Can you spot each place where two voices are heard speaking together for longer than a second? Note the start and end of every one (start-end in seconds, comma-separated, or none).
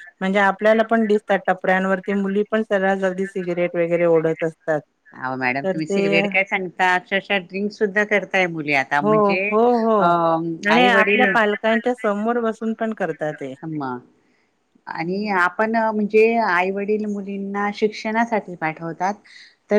none